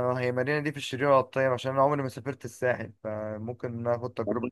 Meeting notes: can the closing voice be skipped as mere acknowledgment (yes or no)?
no